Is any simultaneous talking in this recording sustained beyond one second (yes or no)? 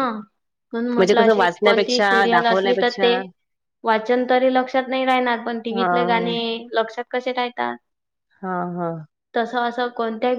yes